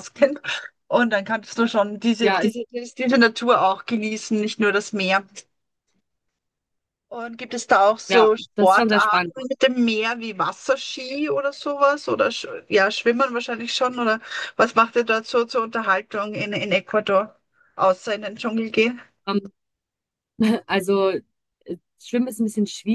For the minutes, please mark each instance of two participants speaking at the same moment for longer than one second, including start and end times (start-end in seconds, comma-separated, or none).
8.1-9.3